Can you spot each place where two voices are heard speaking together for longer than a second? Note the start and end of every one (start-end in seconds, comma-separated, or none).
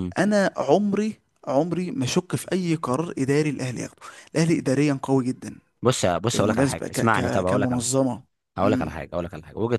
6.3-8.0